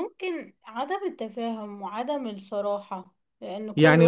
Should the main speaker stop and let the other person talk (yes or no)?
yes